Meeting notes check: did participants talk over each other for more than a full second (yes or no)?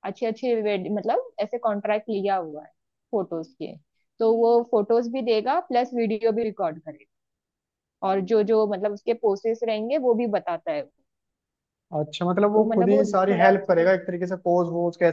yes